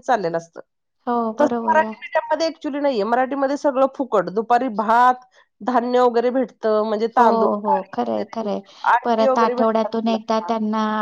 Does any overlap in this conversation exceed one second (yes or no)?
yes